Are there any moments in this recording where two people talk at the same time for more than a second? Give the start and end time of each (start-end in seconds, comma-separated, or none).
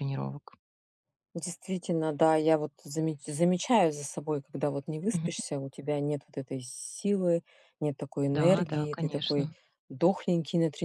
8.3-9.5